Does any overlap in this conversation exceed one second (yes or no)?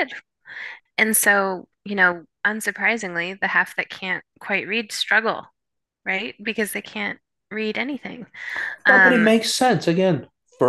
no